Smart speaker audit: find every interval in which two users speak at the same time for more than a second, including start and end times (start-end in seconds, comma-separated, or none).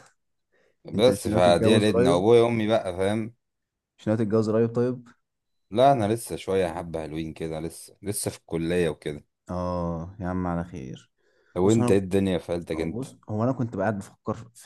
0.9-2.2